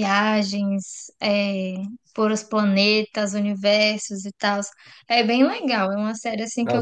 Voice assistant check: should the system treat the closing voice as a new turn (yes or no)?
yes